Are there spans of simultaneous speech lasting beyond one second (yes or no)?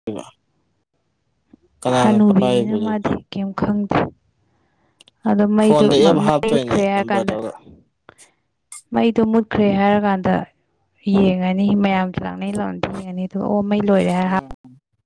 yes